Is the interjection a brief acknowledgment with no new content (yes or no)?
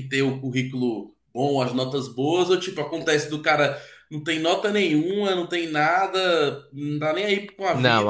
no